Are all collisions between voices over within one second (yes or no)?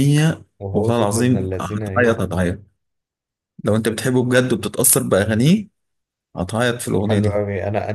no